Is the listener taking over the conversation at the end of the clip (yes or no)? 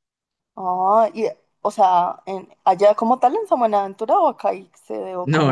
yes